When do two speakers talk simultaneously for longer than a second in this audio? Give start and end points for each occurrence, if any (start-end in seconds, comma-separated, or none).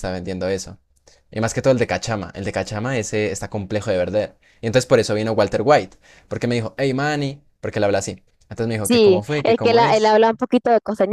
8.8-10.2